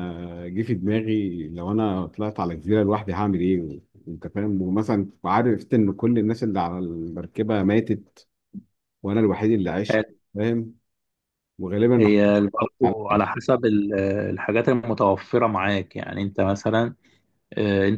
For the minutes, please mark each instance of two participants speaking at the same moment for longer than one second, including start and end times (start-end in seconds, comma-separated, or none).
12.0-13.3